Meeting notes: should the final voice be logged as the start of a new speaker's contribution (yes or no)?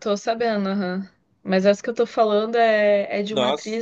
no